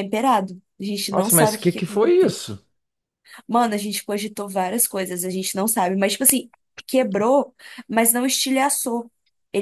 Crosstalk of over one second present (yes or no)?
yes